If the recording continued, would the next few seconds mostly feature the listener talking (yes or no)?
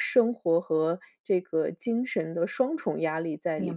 yes